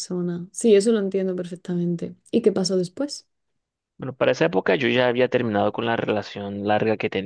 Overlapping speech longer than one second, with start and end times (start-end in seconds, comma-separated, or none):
none